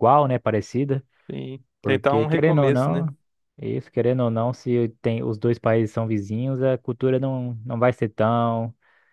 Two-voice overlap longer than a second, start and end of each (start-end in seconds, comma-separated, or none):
1.8-3.1